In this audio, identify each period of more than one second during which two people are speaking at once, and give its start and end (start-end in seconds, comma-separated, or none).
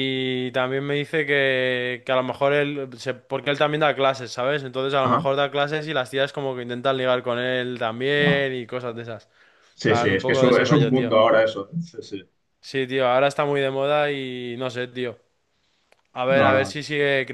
9.8-11.2